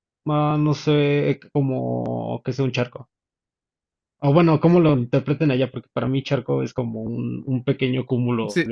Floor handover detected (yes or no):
yes